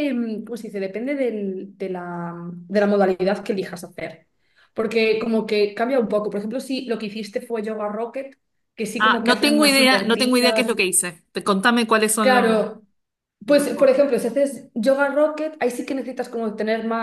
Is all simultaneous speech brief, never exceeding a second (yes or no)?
no